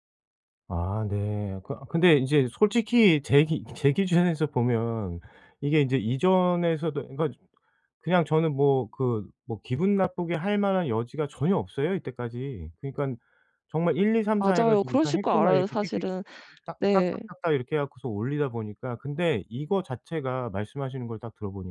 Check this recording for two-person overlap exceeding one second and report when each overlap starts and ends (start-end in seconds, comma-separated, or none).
14.4-16.1